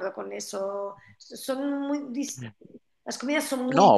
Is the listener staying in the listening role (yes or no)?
no